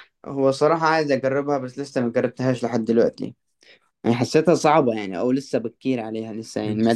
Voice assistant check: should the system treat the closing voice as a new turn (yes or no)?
yes